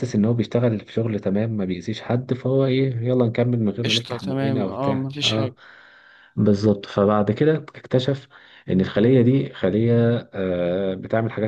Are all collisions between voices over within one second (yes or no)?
no